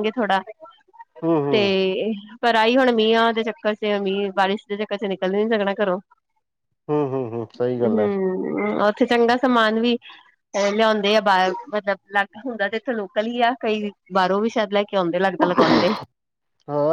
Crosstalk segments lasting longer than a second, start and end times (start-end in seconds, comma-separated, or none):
none